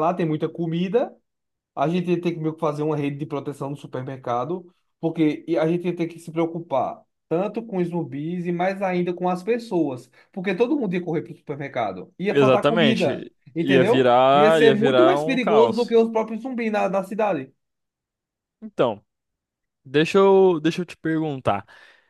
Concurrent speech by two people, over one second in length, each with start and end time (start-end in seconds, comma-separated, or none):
12.3-16.0